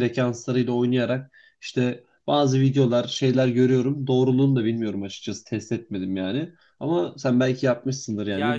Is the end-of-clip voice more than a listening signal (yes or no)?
yes